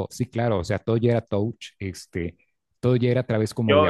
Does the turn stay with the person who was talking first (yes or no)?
no